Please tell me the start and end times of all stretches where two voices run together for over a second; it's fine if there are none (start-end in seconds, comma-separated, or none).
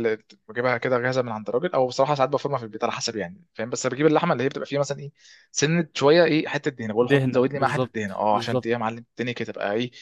7.0-8.9